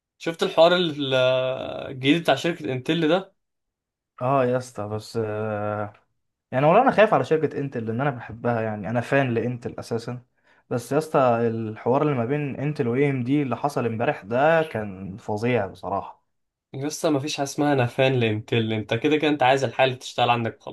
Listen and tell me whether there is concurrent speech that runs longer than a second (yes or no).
no